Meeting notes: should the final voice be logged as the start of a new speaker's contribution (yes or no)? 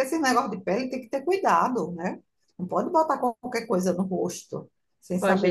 yes